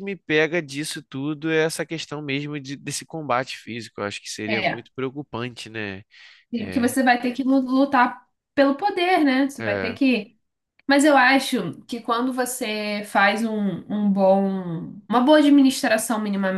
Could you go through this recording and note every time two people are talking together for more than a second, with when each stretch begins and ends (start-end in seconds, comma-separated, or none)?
none